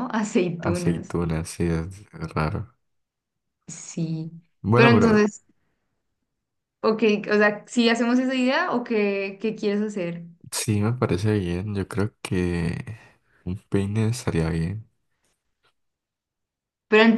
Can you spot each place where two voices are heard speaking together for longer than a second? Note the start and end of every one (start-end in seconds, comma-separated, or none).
none